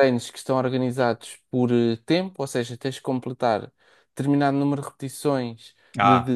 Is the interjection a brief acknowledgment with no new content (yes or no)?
yes